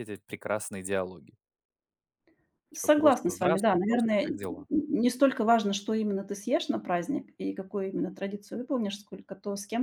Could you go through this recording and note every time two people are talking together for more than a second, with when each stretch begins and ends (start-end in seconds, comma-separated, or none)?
2.7-4.7